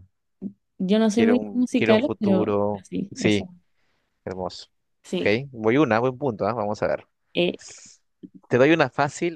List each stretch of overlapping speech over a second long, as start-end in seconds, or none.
1.1-3.5